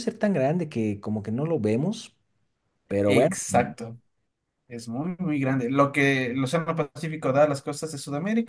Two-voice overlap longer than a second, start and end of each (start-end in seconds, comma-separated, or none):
none